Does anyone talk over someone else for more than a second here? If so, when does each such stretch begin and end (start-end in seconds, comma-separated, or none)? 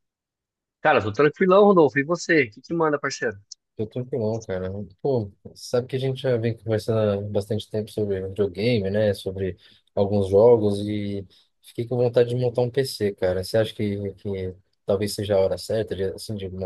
none